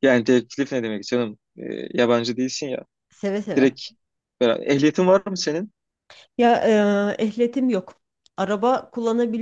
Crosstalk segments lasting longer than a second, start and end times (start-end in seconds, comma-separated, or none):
none